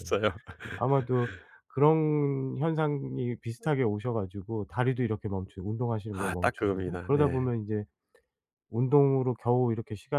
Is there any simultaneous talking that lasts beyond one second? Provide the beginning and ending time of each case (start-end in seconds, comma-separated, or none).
6.2-7.5